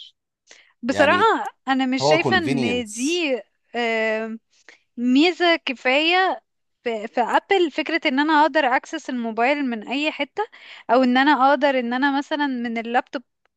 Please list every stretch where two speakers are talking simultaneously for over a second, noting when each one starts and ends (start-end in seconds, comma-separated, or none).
2.0-3.2